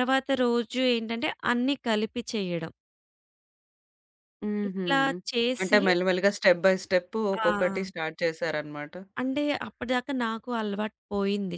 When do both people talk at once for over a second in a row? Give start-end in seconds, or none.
none